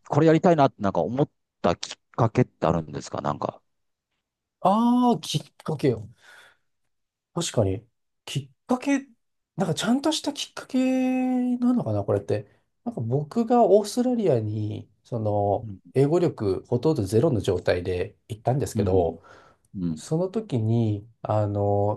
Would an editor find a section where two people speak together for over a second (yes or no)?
no